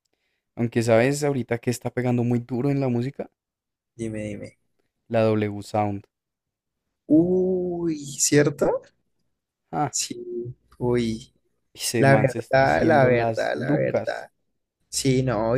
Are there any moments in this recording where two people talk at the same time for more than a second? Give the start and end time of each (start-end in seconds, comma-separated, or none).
12.0-14.3